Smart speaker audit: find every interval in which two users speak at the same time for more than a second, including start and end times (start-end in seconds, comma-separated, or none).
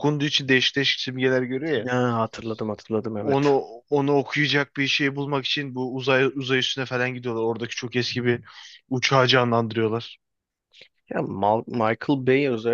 none